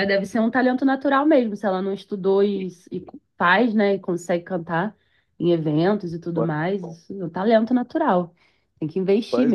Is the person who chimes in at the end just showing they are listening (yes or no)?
no